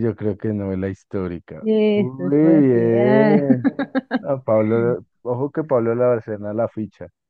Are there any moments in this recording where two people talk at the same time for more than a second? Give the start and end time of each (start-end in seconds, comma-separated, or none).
1.6-3.5